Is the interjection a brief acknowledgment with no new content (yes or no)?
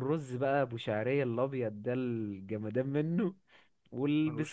yes